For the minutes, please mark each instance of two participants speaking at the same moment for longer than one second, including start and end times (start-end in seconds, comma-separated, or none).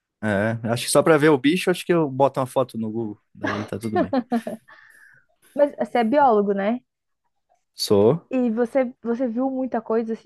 none